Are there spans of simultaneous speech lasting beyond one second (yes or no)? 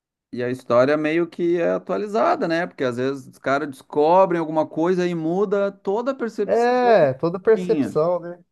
yes